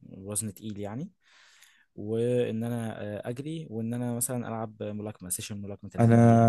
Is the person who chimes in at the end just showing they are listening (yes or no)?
no